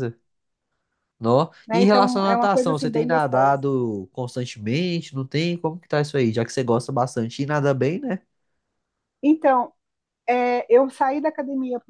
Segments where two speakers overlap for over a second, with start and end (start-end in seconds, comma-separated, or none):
1.7-3.6